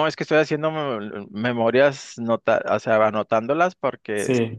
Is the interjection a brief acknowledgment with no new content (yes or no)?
no